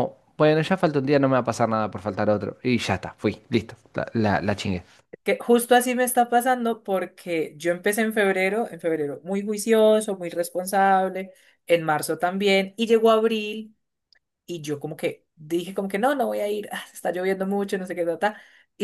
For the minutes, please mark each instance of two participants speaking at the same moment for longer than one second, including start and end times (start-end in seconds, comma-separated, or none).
none